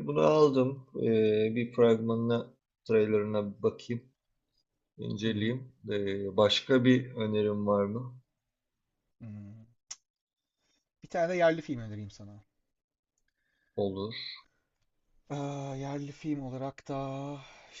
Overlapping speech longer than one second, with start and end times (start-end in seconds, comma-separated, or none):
none